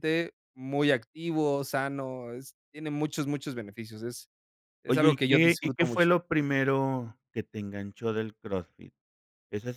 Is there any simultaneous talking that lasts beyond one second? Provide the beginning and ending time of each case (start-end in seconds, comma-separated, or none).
4.9-6.1